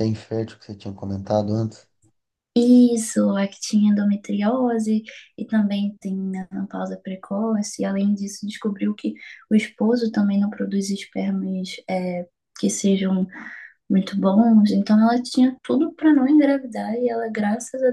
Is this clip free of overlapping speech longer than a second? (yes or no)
yes